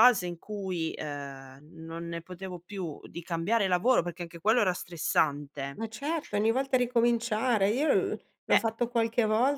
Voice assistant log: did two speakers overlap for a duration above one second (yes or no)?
no